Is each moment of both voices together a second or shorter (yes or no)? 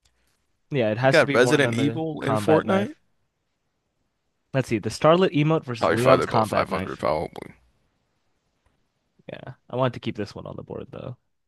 no